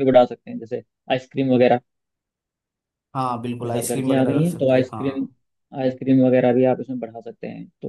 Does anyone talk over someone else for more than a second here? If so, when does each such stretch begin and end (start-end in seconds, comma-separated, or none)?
3.6-5.3